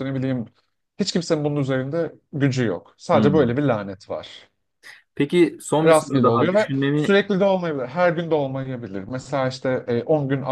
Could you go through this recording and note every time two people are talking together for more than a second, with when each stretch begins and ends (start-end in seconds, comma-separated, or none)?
5.8-7.2